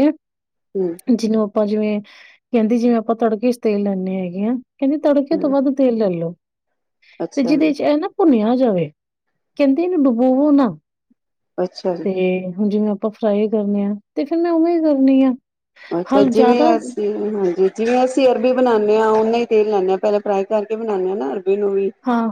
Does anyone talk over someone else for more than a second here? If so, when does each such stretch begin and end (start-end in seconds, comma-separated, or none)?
none